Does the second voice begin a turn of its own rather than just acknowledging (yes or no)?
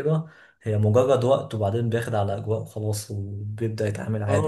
yes